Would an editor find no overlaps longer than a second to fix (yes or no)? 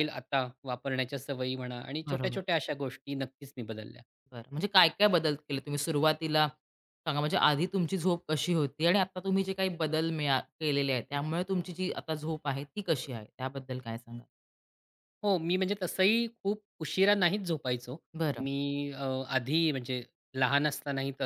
yes